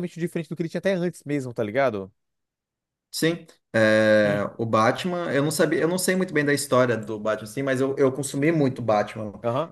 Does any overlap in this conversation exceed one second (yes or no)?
no